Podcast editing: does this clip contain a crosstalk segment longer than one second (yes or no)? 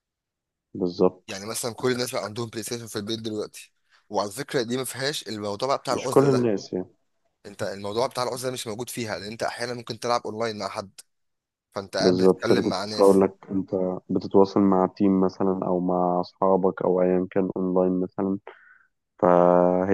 yes